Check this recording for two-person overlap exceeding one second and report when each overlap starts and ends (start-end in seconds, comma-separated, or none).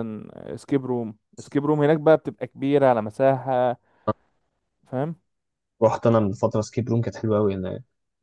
none